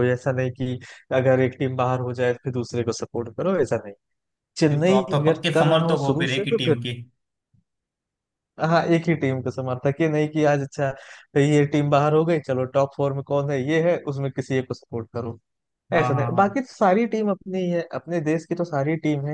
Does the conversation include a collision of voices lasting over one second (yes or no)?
yes